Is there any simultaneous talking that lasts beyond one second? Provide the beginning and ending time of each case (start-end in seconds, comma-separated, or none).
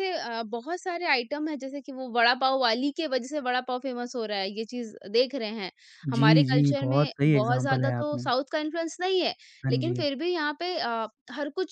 6.1-8.3